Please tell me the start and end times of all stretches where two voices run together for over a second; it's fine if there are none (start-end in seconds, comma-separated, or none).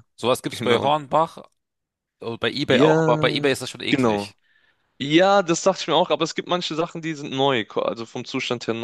2.7-4.3